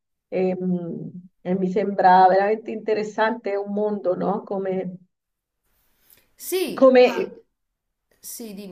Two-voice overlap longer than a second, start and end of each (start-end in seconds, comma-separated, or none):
none